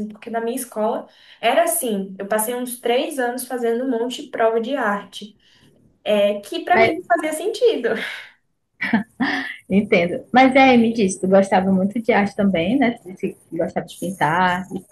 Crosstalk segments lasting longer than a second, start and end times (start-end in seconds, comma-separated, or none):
none